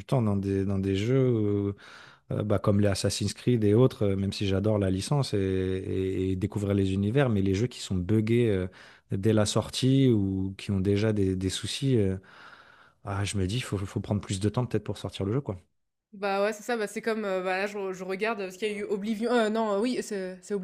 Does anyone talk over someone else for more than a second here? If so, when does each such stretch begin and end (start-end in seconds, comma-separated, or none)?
none